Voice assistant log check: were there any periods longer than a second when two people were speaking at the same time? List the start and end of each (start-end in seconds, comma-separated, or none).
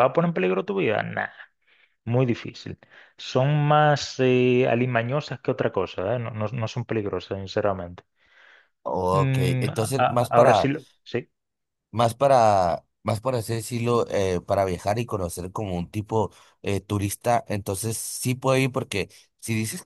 9.1-10.7